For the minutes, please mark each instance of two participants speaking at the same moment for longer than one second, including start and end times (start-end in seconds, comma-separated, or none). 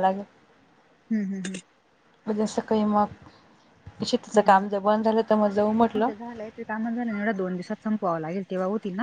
none